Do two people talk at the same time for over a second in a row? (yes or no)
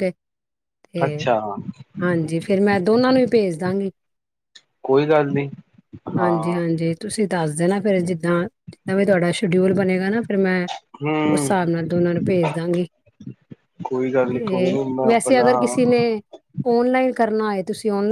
yes